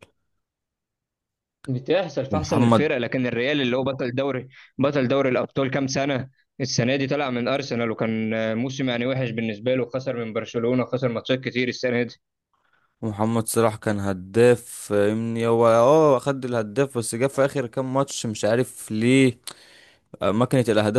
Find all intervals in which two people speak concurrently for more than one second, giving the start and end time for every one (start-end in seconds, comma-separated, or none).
none